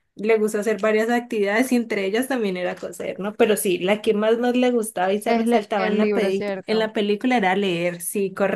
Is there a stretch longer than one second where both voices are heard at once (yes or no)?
yes